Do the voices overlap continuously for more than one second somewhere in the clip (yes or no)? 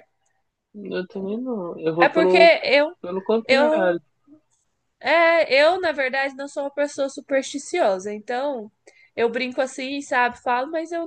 no